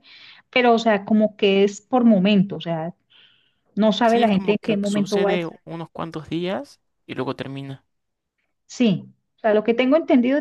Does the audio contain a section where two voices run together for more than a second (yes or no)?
yes